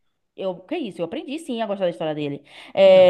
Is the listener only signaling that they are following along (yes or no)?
yes